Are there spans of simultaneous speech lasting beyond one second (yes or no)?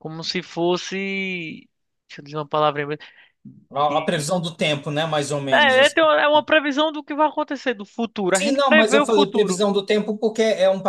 yes